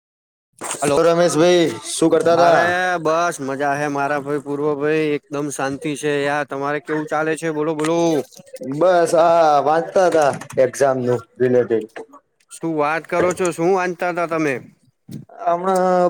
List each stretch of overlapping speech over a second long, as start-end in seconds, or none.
none